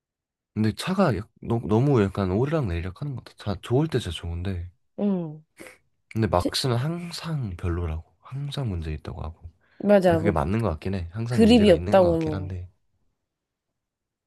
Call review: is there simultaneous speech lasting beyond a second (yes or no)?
yes